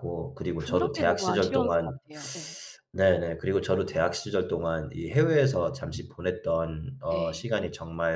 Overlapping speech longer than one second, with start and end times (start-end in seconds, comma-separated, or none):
0.6-2.0